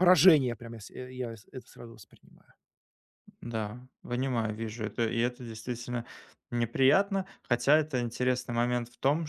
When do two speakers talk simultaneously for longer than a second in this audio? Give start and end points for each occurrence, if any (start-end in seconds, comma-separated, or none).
none